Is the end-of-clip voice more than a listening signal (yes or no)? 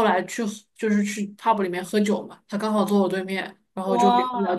no